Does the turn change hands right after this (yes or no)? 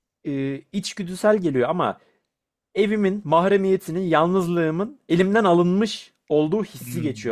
no